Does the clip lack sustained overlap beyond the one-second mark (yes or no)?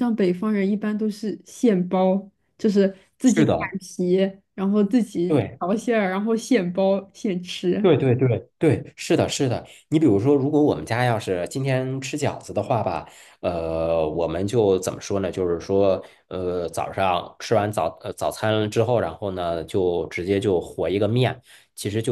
yes